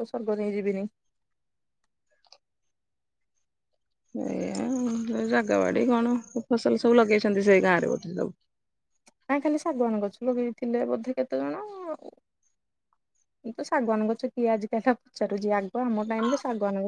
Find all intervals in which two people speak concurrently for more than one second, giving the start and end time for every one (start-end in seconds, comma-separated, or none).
none